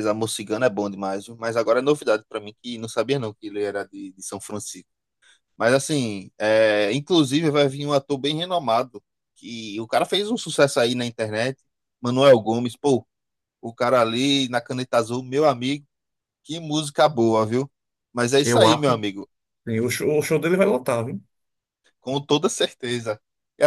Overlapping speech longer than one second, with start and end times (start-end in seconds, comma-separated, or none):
none